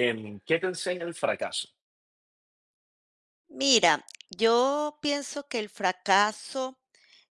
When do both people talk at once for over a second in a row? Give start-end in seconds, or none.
none